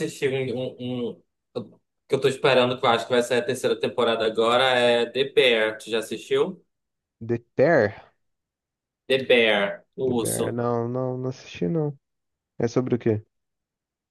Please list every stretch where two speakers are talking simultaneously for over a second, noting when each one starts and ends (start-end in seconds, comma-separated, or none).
none